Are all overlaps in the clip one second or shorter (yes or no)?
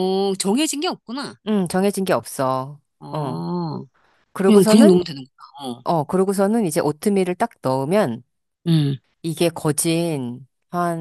yes